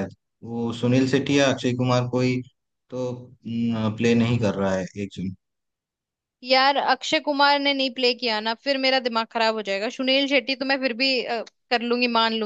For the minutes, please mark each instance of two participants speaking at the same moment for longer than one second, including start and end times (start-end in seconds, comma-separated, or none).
none